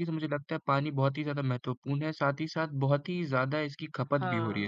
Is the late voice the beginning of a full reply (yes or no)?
yes